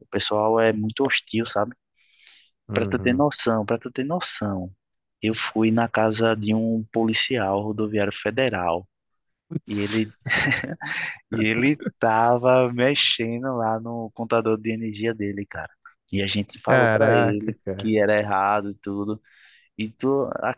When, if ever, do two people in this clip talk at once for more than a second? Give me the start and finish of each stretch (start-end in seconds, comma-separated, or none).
16.7-17.9